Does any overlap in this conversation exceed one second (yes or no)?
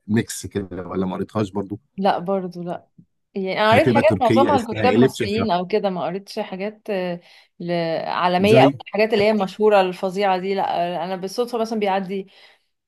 yes